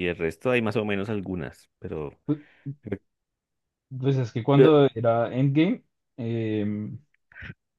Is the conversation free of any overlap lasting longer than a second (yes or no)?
yes